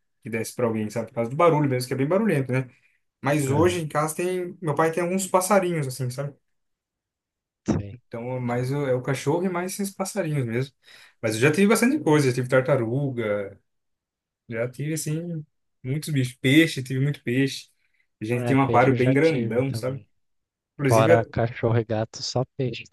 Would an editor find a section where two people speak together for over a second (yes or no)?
yes